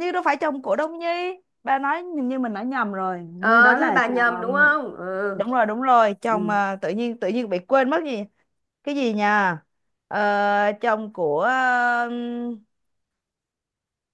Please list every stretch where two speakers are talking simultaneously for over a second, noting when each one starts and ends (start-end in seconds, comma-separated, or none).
3.4-4.7